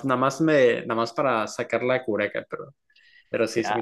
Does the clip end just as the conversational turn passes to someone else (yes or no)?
yes